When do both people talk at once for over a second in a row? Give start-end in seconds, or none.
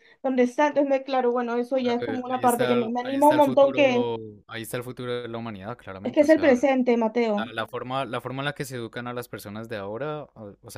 1.8-4.1